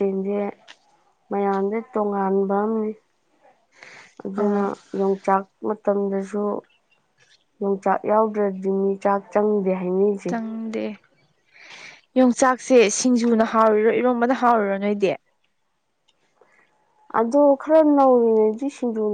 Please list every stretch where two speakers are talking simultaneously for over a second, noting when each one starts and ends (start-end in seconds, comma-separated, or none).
none